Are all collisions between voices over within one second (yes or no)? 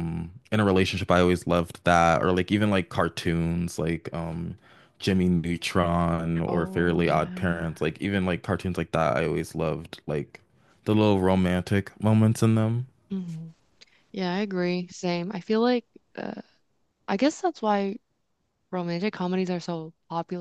no